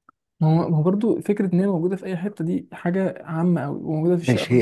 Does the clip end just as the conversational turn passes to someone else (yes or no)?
yes